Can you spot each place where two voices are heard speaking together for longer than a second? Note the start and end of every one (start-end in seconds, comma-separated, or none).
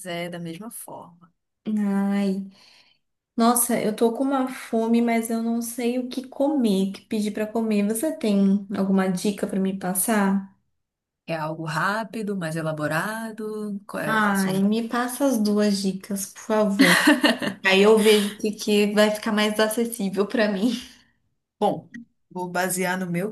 none